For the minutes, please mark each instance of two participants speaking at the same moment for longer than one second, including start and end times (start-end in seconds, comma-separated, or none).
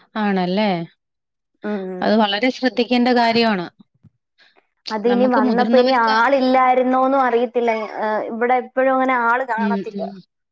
none